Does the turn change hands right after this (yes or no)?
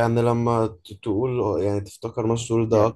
no